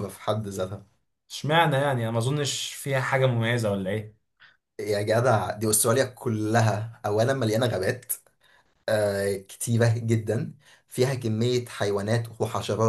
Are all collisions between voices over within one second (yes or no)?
yes